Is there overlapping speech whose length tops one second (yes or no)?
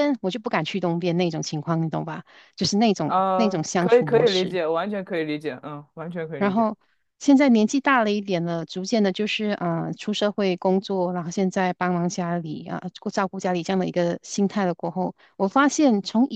yes